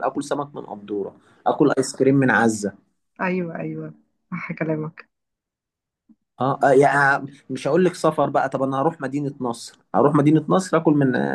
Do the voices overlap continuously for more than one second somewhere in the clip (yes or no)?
no